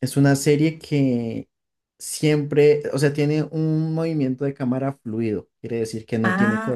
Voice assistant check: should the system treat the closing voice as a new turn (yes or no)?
yes